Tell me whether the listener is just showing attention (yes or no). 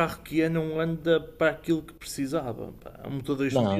no